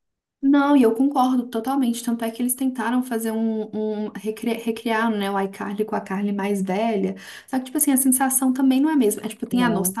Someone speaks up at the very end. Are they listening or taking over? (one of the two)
listening